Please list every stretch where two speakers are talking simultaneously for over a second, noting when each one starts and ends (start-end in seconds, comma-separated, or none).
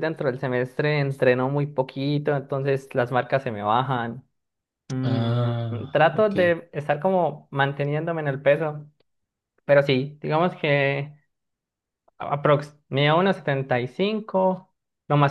5.0-6.5